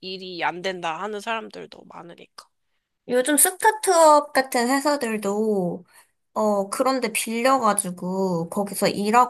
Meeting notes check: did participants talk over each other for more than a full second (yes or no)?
no